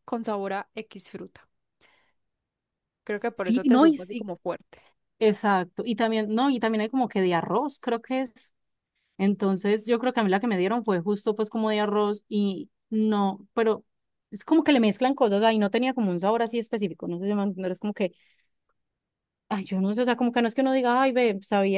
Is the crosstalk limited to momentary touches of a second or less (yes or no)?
no